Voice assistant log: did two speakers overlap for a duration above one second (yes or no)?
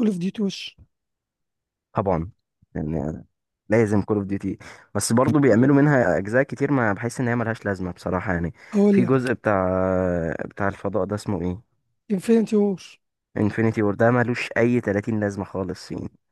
no